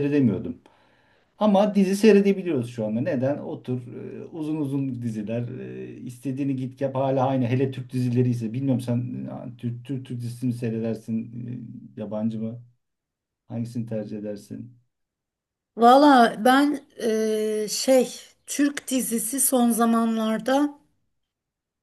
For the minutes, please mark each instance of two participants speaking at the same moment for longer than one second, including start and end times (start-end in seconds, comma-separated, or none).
none